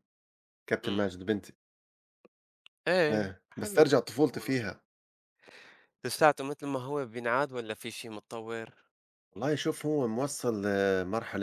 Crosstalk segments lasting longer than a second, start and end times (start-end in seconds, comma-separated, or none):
3.1-4.7